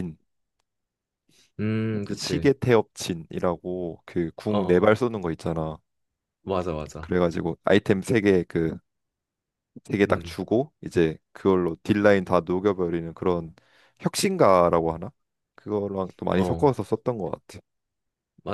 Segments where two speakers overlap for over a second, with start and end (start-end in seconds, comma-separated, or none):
none